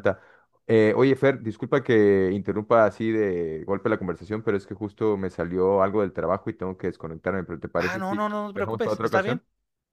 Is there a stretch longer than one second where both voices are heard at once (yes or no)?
yes